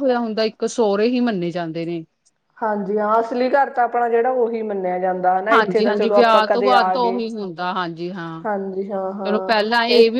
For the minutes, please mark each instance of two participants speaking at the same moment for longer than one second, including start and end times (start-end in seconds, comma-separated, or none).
5.5-7.2